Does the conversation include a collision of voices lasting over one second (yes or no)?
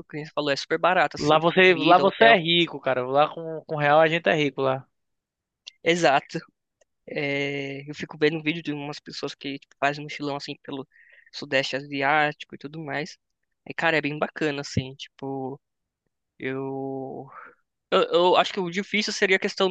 yes